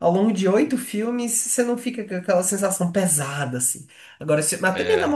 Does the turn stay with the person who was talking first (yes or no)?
yes